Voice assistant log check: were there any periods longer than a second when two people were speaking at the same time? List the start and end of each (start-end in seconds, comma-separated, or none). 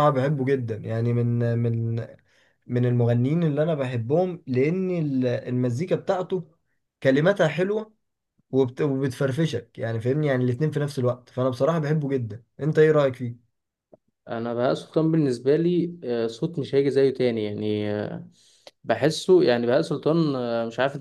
none